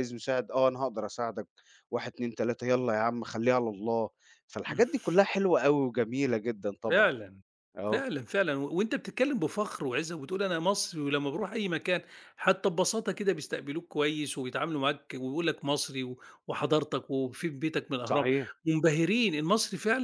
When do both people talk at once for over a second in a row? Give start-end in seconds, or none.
none